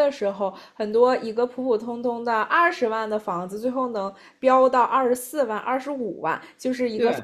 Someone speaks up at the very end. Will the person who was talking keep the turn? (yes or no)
yes